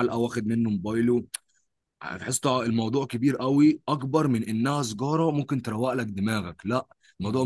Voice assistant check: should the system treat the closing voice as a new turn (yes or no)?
no